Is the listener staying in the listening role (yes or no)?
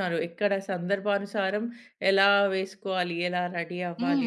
no